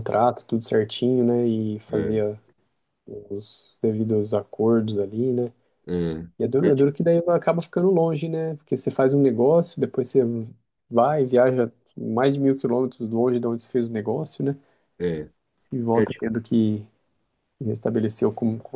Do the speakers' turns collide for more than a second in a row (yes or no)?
no